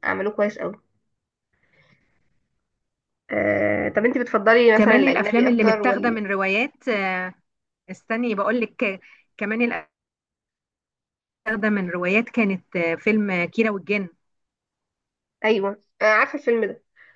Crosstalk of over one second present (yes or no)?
yes